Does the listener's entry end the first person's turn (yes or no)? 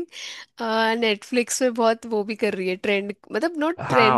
yes